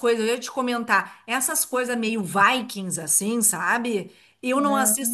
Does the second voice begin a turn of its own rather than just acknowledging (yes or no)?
no